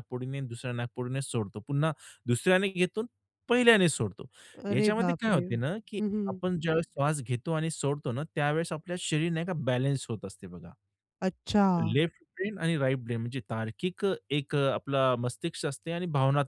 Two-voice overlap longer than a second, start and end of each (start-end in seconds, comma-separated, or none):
4.7-6.4